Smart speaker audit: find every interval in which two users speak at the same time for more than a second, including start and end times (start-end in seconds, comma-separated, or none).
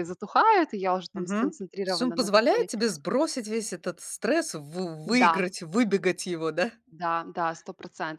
1.1-2.7